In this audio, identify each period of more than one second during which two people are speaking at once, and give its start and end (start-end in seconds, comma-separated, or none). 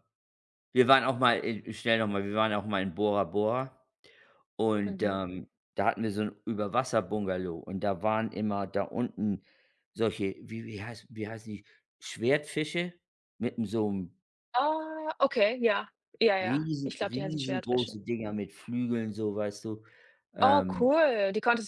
16.4-18.0